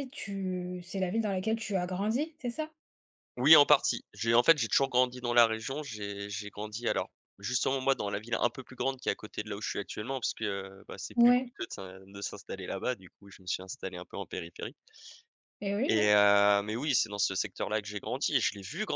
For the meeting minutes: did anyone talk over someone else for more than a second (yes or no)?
no